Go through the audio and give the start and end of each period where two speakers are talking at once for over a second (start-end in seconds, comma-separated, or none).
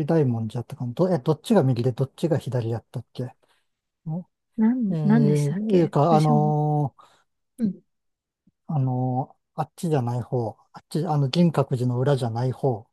4.9-6.5